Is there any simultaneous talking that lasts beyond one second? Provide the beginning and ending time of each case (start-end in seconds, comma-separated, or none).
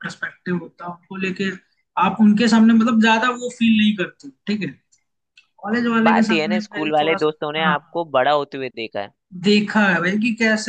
6.1-8.0